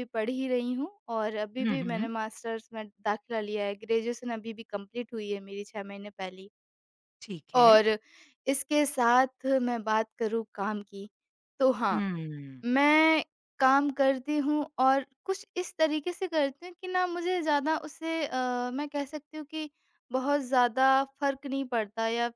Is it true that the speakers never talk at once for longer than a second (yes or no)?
yes